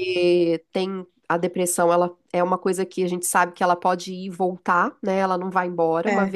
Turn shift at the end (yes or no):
no